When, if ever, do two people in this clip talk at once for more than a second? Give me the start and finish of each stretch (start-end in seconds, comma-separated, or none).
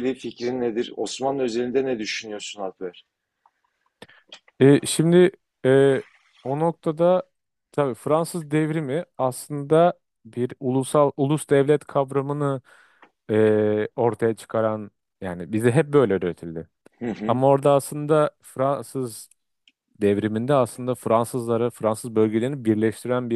none